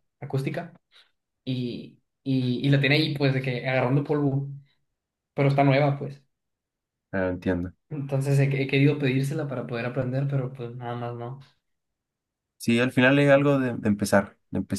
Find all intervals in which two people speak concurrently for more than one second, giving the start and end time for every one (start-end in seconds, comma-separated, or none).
none